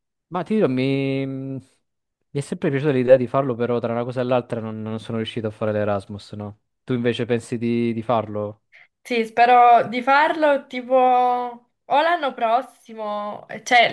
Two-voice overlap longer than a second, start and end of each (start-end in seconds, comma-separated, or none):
none